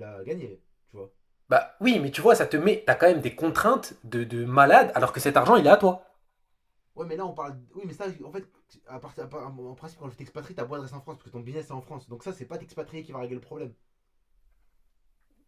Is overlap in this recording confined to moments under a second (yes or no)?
yes